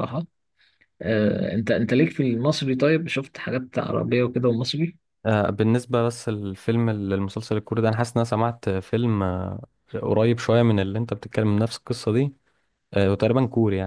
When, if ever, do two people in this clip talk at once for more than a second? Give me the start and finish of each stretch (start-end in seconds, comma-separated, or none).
none